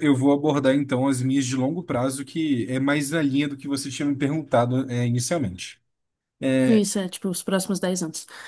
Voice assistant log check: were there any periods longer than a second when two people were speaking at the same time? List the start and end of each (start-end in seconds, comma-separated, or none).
none